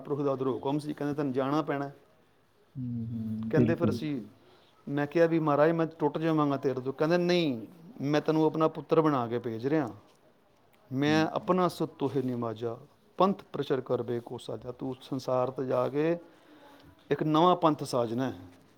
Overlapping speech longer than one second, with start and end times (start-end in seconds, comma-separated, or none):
none